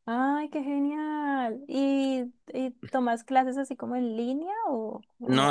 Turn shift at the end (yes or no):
yes